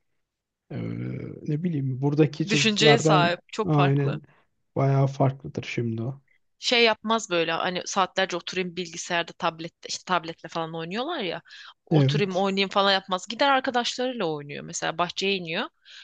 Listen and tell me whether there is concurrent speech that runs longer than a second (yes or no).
yes